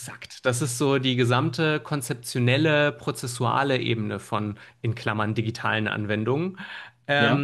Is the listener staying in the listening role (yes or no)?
yes